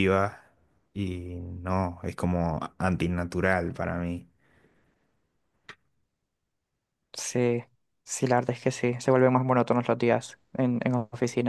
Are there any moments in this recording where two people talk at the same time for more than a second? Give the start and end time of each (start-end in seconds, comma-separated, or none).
none